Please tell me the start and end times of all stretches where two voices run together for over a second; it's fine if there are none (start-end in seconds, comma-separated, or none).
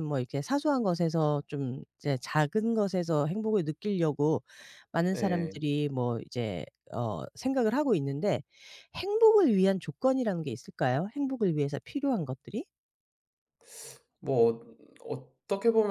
none